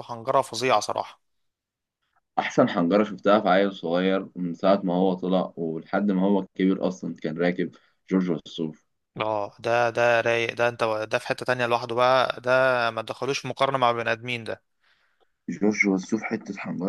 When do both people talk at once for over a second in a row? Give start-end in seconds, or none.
none